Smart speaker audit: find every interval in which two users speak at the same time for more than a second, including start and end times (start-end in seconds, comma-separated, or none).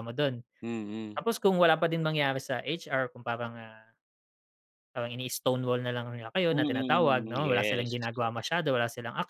6.5-8.0